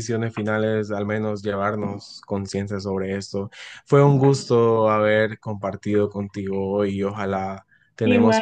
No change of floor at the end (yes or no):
yes